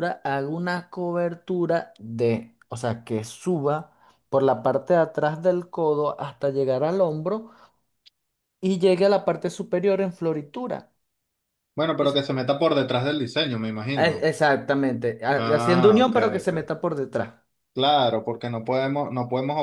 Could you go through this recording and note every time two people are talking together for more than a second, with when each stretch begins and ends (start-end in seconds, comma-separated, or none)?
15.3-16.8